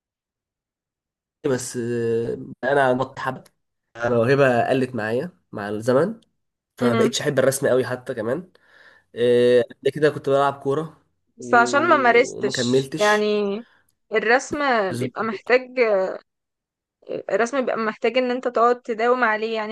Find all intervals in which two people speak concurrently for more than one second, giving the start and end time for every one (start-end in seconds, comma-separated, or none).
11.4-13.2